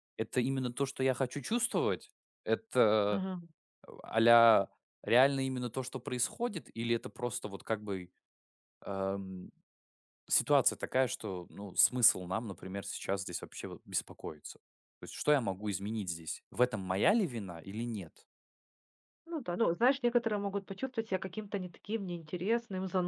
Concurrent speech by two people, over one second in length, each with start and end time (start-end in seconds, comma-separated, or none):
none